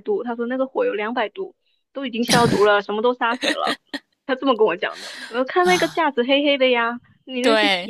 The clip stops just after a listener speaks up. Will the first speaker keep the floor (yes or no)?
yes